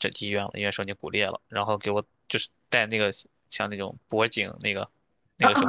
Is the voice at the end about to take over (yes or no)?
no